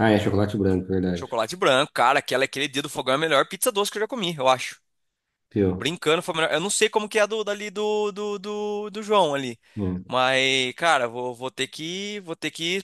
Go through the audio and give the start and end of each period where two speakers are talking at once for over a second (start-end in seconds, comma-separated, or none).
none